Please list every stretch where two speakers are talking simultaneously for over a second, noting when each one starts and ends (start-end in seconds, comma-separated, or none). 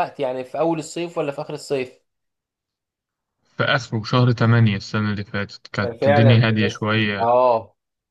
5.8-7.2